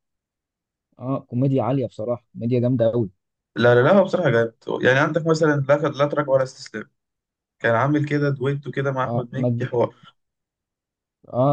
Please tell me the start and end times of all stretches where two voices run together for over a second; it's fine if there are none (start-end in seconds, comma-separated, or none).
none